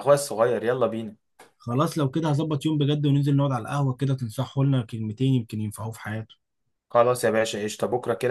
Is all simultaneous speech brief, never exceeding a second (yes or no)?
yes